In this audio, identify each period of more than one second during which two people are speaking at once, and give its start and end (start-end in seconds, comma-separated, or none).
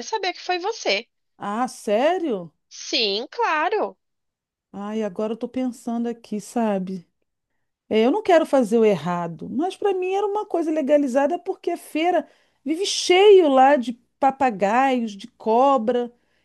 none